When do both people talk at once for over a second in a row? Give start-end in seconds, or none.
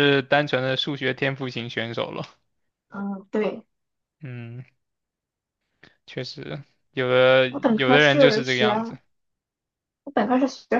7.5-9.0